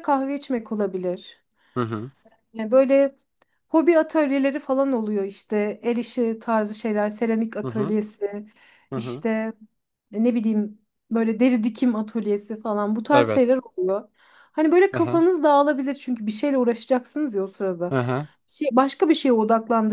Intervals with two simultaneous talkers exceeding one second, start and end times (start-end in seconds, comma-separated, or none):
none